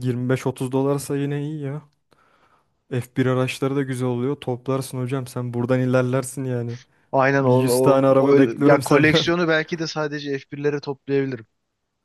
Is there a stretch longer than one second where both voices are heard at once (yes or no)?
yes